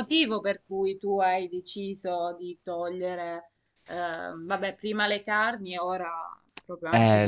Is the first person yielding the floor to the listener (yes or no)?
yes